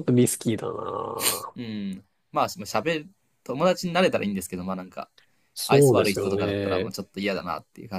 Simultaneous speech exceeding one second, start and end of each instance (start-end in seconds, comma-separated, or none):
5.7-6.9